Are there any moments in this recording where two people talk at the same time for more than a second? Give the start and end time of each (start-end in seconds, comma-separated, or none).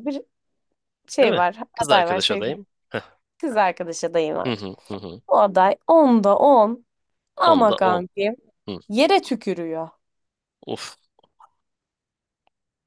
1.2-2.6